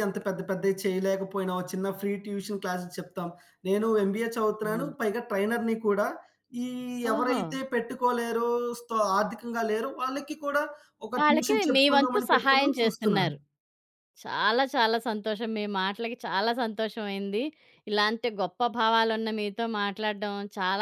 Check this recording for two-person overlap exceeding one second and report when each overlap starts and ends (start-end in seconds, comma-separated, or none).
11.2-13.3